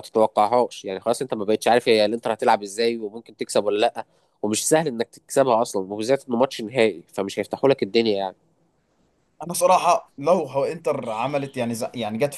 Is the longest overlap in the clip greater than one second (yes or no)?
no